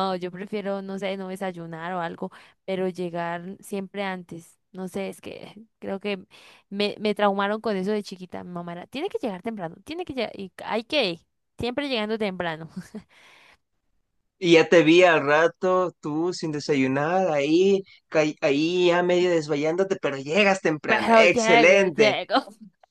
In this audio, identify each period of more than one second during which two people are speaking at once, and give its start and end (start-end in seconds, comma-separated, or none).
20.9-22.2